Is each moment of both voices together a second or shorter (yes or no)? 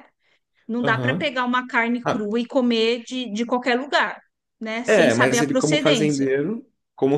no